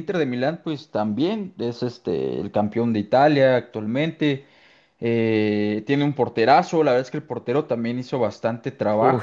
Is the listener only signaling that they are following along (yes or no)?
no